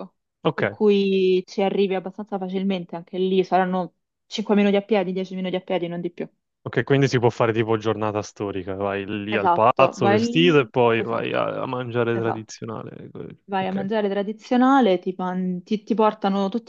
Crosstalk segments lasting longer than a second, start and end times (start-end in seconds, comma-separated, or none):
9.3-11.3